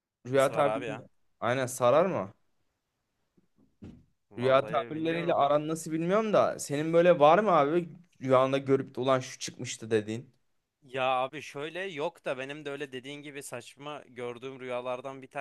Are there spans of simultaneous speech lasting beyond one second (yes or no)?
yes